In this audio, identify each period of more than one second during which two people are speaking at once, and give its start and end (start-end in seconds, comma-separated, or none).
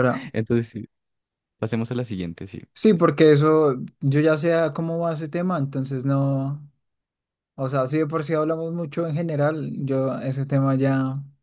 none